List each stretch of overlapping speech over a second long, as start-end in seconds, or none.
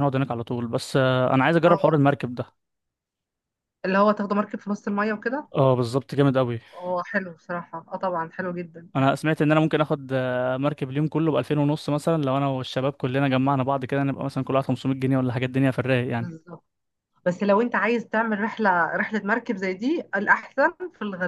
none